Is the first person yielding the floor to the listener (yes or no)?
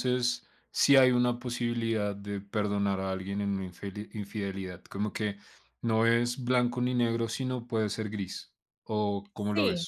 yes